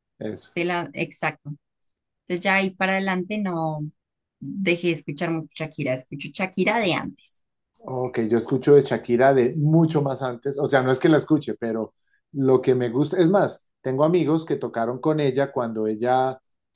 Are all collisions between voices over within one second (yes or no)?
yes